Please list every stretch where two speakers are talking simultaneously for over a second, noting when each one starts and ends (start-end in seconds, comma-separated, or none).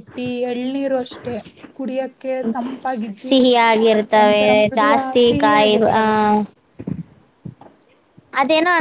4.2-6.0